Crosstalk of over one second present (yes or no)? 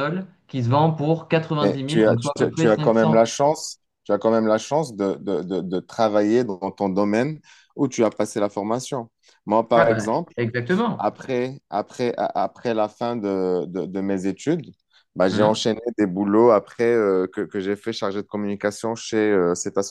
yes